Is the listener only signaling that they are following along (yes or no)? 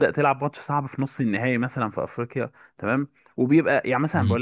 yes